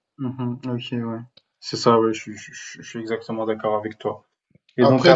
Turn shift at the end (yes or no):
no